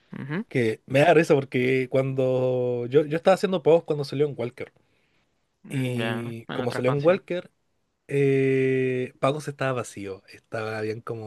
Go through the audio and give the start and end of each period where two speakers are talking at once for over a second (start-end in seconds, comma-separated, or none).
5.7-7.2